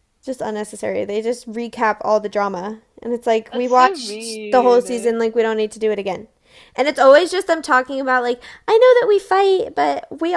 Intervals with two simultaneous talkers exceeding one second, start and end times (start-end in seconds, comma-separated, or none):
3.5-5.1